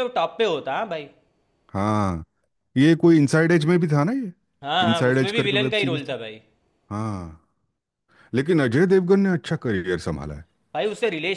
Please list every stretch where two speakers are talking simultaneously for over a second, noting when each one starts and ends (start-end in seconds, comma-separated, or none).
4.9-6.2